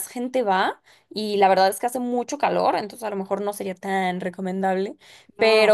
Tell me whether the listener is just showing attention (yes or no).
yes